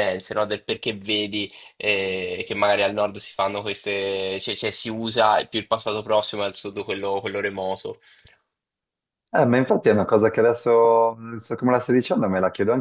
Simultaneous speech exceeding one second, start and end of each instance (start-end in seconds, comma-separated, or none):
none